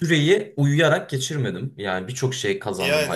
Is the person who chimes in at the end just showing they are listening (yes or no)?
yes